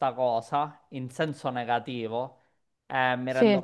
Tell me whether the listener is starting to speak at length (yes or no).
no